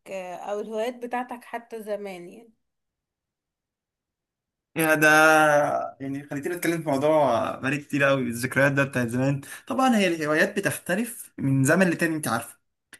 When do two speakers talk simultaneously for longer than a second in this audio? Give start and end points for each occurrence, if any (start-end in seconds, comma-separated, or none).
none